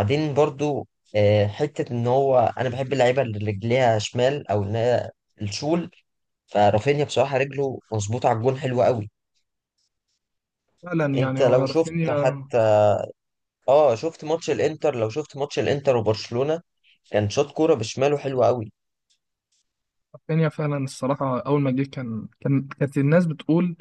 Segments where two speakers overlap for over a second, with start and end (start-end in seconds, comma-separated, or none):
11.2-12.4